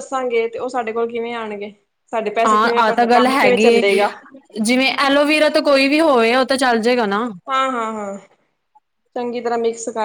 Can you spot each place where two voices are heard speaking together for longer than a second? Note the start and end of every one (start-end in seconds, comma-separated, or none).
2.5-3.8